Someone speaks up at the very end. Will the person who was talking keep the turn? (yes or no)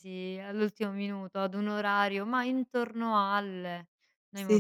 no